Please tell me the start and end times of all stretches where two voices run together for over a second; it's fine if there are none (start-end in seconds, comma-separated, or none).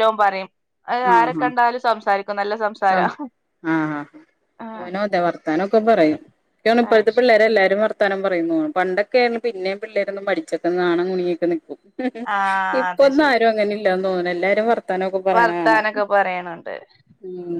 none